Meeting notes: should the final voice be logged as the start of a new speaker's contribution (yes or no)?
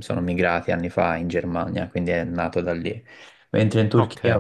no